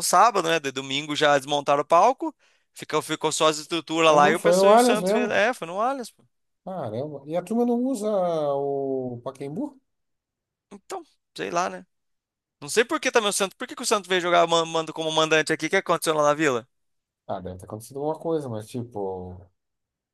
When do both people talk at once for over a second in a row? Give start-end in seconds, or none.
4.1-5.4